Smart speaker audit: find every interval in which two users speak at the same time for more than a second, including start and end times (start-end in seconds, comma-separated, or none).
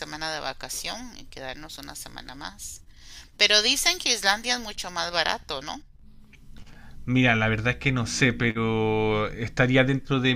none